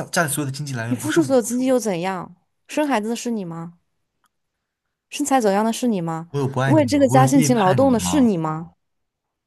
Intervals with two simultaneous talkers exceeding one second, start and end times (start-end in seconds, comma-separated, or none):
6.7-8.3